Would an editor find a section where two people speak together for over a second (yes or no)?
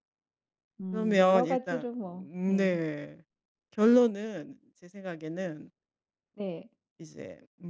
yes